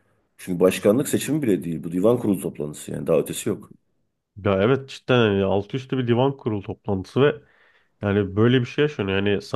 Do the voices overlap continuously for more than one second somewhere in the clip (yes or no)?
no